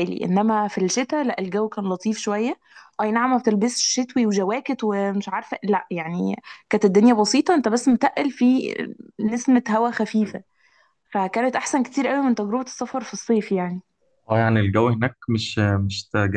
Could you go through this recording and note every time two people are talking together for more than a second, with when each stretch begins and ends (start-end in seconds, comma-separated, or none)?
none